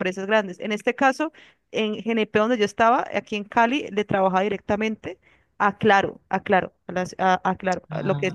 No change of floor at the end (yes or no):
yes